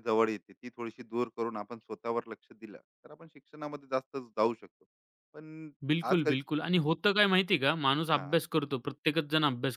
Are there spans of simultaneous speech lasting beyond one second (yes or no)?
no